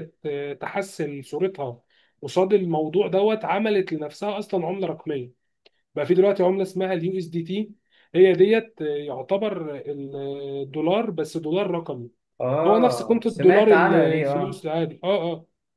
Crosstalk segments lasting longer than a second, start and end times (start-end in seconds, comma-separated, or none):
12.7-14.7